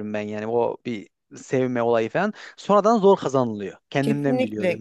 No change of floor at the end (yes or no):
no